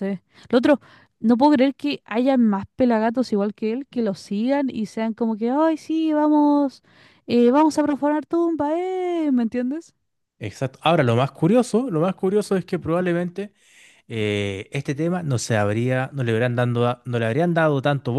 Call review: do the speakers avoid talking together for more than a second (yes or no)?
yes